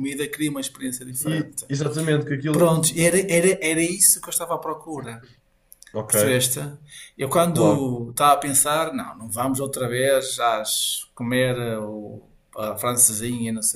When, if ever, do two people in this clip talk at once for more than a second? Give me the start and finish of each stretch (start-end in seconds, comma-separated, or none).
none